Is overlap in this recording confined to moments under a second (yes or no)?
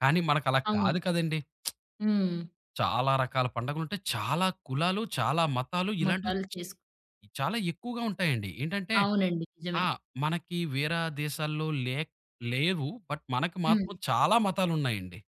yes